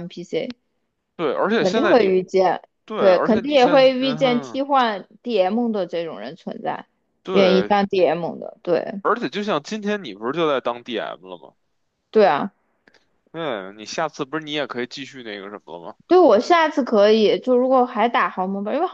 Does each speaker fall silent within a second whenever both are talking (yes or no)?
no